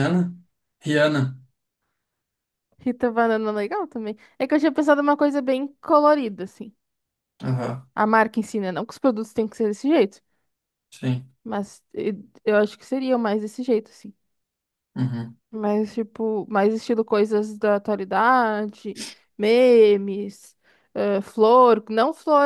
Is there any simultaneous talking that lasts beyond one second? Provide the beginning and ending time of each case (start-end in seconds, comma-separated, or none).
none